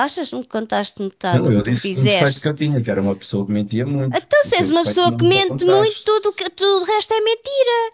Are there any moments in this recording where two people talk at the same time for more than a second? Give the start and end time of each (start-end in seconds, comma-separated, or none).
1.3-2.8, 4.1-6.4